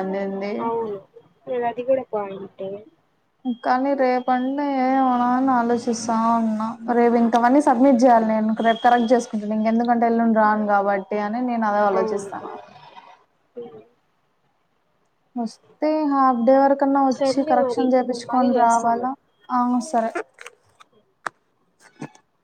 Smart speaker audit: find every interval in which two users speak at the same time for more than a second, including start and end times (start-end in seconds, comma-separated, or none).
17.2-19.1